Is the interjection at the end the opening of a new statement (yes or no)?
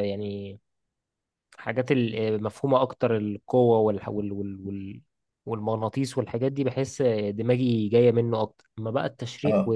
no